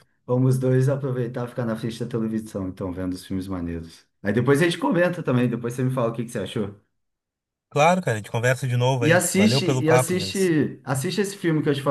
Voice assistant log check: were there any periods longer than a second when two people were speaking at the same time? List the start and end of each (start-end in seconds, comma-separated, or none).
9.0-10.5